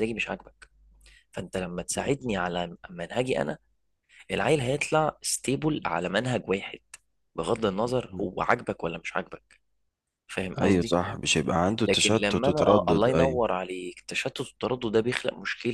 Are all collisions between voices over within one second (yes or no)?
no